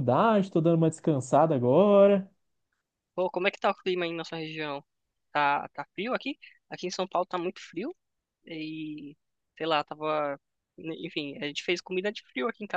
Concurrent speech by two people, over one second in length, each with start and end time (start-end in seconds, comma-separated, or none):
none